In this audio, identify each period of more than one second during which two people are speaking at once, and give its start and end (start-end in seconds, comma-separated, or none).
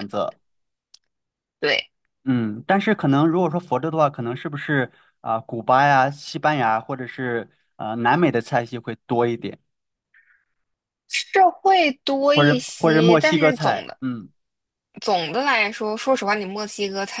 12.3-14.0